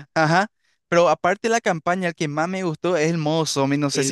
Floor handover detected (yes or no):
yes